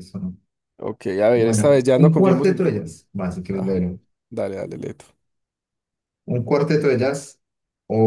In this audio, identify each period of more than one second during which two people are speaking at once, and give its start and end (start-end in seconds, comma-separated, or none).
1.3-2.6